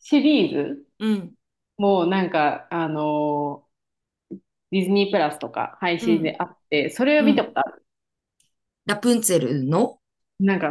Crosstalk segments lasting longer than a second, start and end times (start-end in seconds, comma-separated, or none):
none